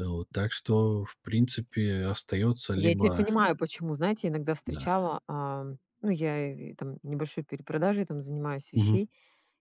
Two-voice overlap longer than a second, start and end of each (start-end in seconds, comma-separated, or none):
none